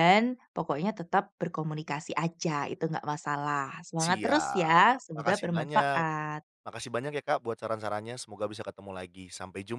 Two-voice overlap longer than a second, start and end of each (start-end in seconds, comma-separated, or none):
4.0-6.0